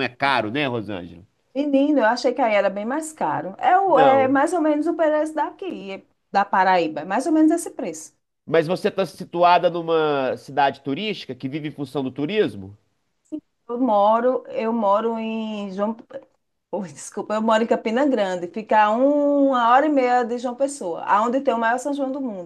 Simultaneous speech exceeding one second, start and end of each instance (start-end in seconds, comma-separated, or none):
none